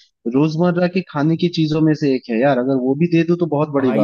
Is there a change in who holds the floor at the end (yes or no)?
yes